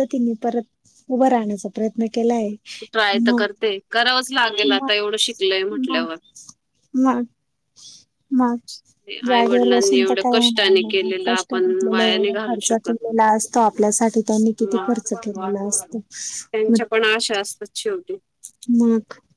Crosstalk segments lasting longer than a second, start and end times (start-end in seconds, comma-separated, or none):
9.3-12.9, 14.6-15.9